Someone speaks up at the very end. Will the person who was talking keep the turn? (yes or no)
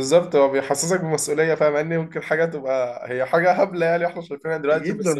yes